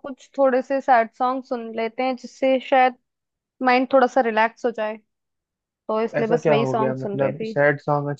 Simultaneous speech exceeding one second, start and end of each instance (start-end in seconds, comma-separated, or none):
6.0-7.5